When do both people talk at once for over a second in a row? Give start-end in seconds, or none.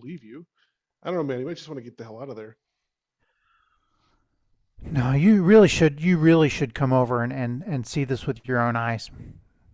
none